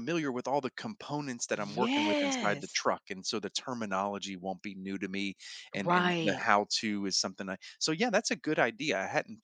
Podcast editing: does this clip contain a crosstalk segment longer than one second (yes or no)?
yes